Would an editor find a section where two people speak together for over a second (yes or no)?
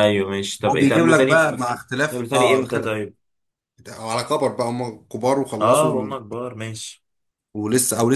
yes